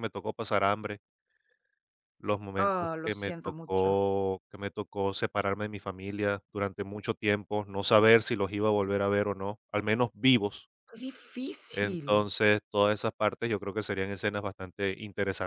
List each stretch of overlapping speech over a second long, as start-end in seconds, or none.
2.6-4.0